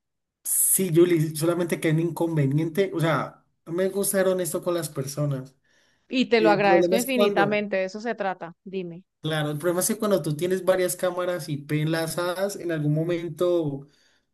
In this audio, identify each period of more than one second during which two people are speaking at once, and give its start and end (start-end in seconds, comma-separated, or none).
6.4-7.6